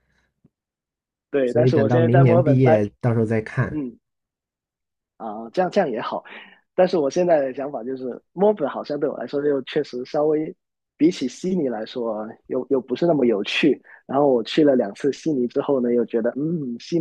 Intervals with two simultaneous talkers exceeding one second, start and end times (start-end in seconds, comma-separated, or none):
1.4-2.9